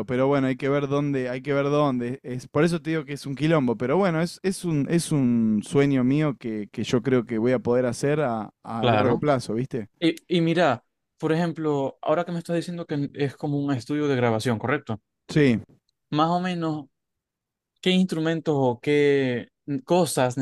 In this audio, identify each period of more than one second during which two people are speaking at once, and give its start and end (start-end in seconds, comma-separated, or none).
none